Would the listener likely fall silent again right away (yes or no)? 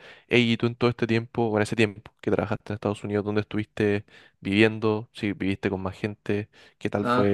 no